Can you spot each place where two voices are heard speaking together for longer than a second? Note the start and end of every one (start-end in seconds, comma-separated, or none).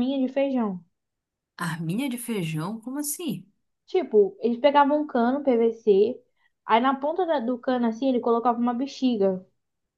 none